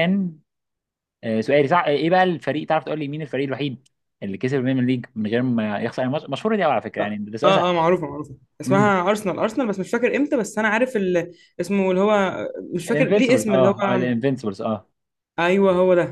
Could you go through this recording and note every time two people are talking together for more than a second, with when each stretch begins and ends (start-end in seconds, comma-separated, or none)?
12.9-14.1